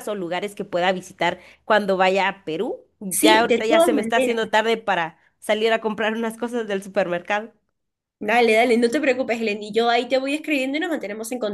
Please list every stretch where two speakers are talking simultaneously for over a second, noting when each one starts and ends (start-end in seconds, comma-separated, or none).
3.1-4.3